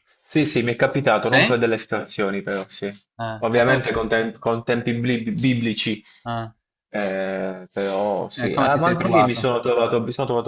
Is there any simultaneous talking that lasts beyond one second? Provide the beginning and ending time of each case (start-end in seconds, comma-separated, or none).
8.3-9.6